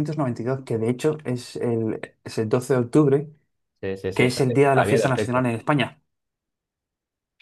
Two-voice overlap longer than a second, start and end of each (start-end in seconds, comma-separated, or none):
4.1-5.4